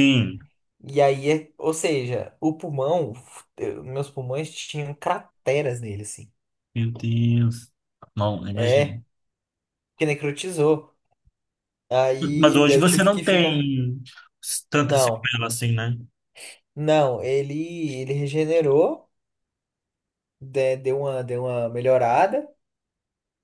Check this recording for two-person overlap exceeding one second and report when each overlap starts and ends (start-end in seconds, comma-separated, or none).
12.4-13.7